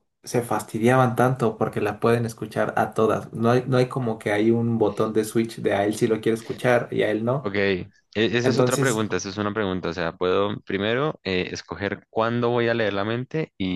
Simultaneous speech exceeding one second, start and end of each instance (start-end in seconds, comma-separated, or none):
none